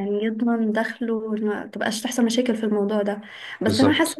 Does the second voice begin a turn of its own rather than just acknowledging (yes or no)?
no